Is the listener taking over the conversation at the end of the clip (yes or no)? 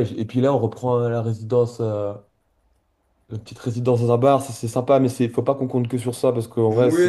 yes